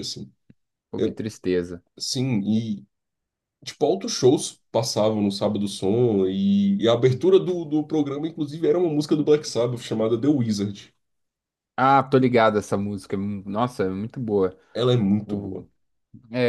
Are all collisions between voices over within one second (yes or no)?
yes